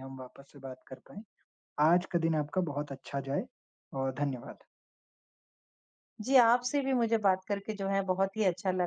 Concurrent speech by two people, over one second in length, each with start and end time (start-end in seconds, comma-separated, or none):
none